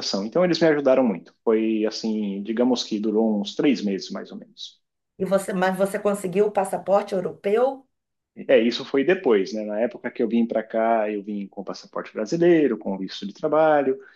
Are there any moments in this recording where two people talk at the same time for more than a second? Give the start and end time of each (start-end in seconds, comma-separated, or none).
none